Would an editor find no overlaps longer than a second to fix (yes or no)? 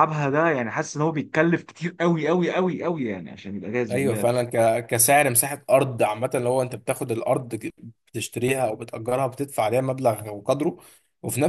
yes